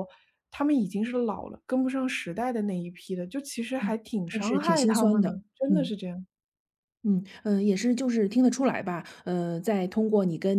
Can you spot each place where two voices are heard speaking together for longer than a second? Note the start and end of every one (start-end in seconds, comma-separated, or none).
3.8-5.9